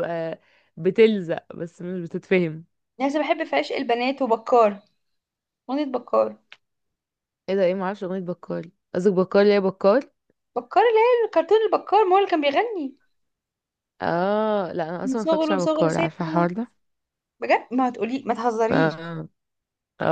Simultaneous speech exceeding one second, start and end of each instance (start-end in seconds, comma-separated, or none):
15.0-16.5